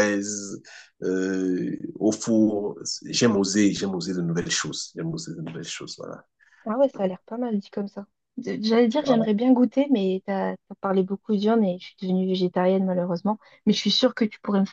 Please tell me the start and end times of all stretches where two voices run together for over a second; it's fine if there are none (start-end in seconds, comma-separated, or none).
none